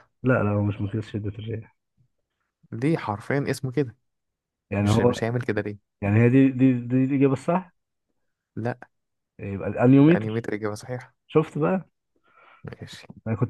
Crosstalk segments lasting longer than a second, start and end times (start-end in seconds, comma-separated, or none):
none